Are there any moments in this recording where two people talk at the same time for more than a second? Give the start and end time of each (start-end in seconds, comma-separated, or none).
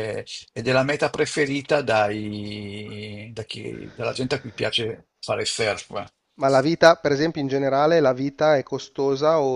none